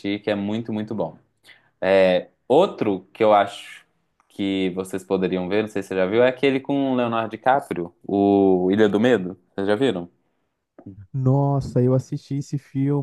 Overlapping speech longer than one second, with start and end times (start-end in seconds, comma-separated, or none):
none